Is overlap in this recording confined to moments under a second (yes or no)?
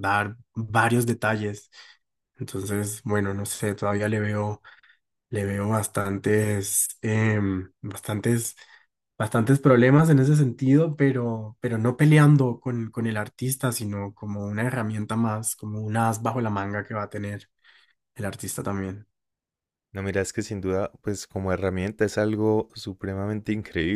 yes